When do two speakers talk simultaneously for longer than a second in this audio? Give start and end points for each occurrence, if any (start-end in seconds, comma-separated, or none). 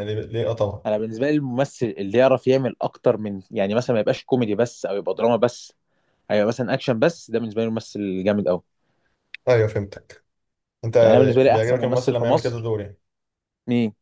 11.5-12.7